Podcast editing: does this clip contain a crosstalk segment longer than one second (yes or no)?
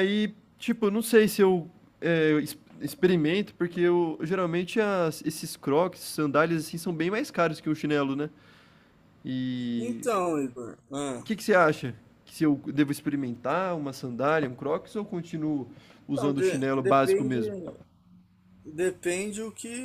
yes